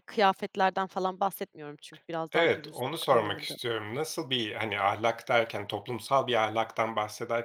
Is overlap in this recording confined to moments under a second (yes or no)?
no